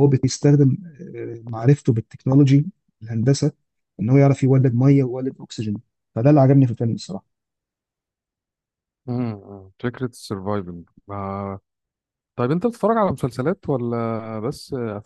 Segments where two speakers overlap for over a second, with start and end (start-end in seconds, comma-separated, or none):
none